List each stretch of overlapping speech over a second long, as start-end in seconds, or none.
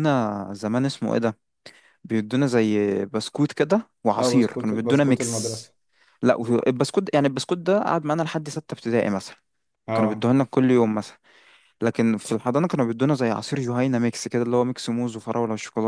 4.2-5.6